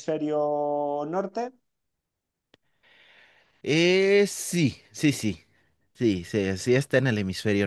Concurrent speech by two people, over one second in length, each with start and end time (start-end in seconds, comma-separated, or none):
none